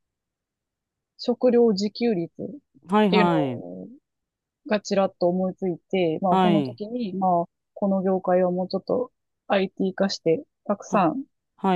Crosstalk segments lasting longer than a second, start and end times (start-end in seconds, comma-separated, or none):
none